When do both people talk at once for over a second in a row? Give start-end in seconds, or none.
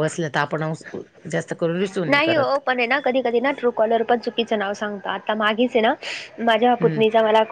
none